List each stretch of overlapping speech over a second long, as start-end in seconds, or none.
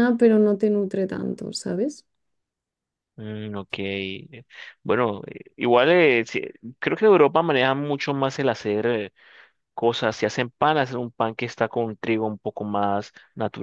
none